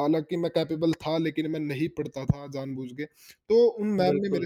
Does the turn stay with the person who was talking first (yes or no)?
yes